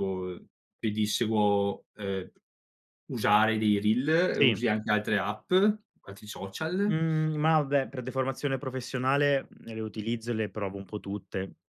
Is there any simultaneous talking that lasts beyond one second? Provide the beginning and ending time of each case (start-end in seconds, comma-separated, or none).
none